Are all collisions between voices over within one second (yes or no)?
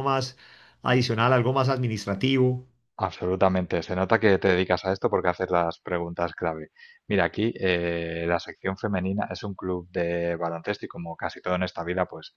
yes